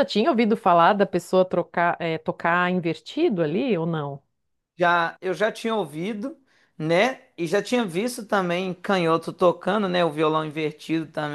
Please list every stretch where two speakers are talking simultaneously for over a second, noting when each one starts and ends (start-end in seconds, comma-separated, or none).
none